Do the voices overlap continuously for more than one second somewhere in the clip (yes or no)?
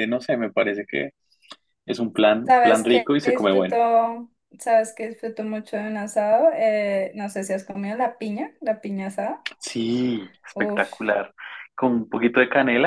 yes